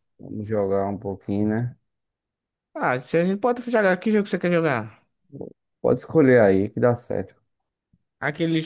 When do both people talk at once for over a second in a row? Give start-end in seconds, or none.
none